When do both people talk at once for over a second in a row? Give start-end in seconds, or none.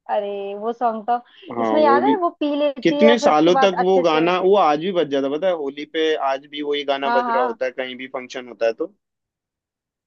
2.8-4.3